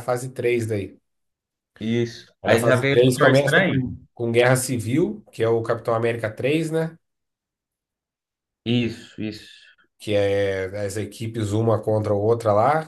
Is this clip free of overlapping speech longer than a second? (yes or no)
no